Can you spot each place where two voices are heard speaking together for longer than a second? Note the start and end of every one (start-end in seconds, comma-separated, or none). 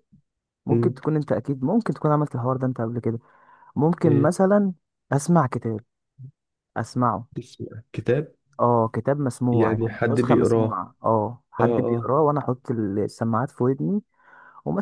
9.5-10.8